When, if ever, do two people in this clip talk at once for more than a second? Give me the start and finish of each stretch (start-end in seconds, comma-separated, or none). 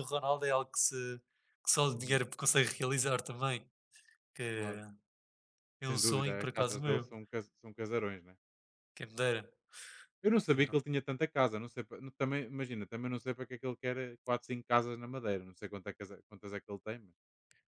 5.9-7.1